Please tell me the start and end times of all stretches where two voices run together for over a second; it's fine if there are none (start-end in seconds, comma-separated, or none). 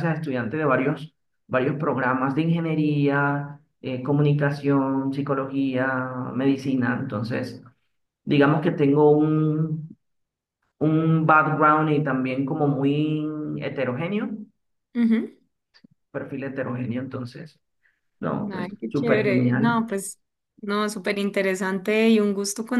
18.5-19.8